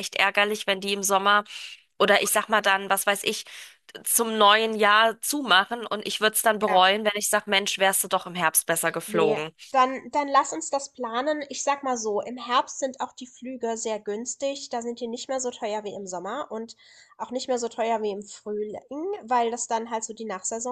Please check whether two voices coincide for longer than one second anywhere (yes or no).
no